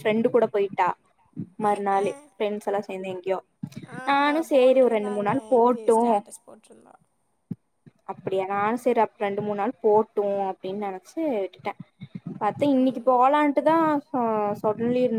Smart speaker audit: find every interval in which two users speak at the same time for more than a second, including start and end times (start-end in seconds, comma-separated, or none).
4.1-6.0